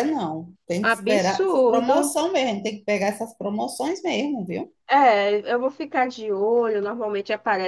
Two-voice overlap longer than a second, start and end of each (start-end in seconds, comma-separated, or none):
0.8-2.2